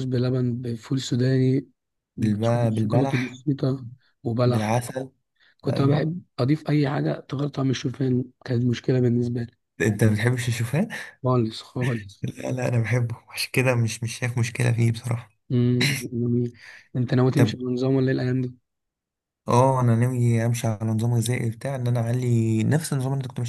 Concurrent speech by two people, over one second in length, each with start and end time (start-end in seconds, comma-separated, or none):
2.2-3.4